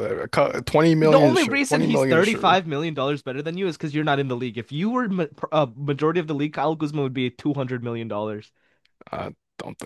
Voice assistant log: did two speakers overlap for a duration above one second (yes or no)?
yes